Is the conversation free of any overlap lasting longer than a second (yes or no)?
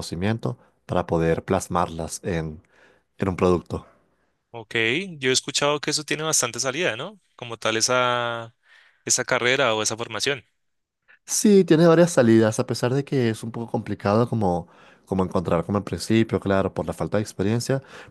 yes